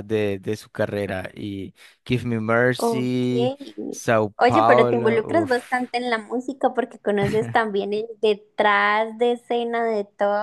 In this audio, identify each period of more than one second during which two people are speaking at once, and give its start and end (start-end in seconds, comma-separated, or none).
4.4-5.8